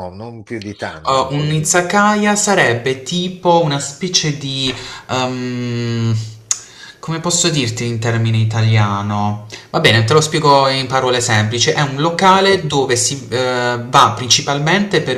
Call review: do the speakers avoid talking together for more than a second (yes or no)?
yes